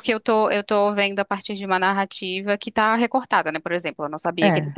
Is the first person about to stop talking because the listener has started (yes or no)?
no